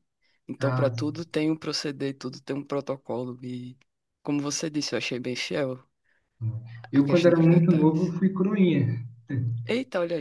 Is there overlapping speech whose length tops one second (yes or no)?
yes